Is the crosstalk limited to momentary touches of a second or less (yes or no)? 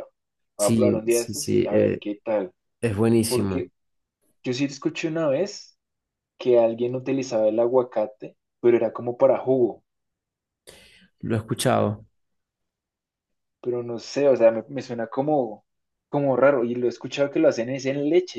no